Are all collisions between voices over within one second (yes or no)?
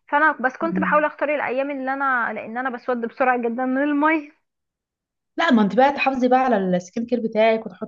yes